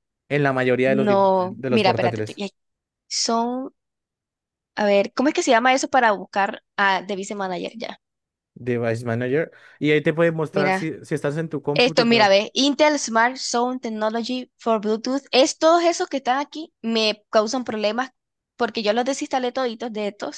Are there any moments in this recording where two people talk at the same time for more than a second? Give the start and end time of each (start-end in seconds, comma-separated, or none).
1.1-2.4